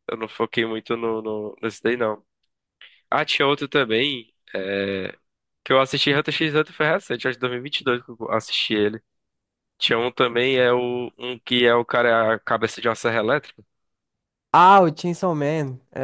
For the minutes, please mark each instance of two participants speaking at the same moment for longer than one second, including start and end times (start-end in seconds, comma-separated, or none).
none